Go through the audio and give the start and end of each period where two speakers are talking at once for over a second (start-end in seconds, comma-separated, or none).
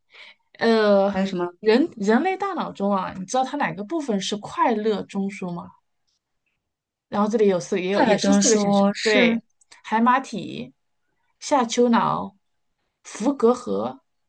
7.9-9.4